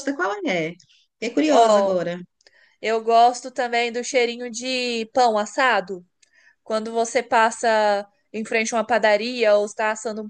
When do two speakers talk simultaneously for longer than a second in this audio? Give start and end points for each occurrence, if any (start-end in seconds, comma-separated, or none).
none